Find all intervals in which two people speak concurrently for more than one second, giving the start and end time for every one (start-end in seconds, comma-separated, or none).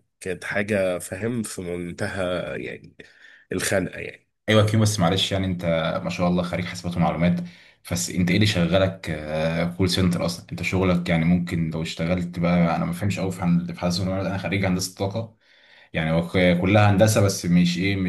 none